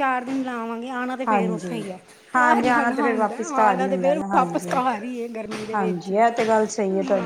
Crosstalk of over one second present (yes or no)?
yes